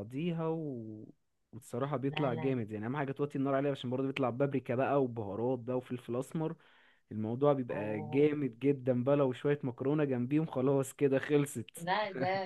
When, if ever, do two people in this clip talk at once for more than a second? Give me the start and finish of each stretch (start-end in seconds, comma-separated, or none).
none